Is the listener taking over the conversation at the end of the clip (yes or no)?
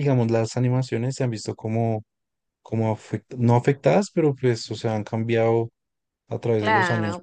yes